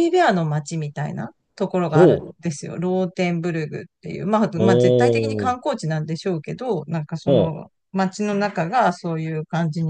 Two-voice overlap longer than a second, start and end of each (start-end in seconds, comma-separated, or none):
4.5-5.7